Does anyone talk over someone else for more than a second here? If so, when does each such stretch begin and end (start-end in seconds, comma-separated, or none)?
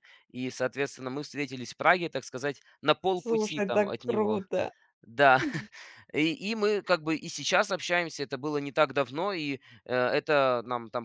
3.2-4.4